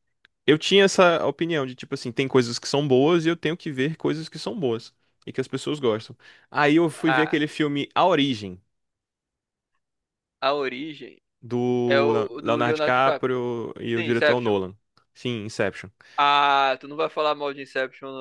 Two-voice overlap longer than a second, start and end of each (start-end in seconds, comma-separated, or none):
11.9-13.2